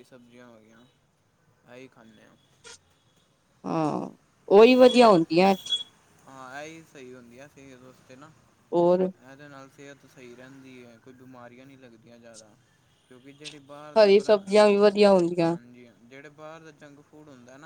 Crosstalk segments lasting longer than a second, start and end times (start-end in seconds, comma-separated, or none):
none